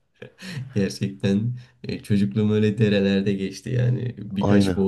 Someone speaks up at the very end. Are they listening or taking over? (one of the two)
listening